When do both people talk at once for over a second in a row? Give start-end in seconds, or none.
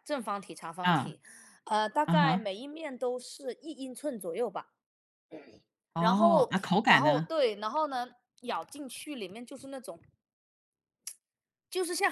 6.0-7.3